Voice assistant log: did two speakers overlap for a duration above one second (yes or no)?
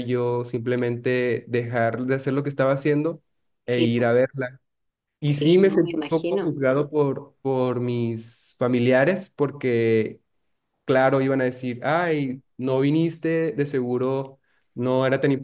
yes